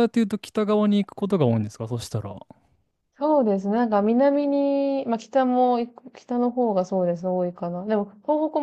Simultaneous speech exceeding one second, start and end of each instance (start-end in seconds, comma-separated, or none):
none